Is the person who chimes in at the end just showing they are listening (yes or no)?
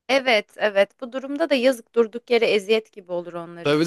no